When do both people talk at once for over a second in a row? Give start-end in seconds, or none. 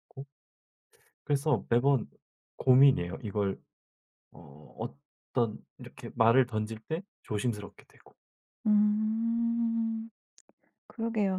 none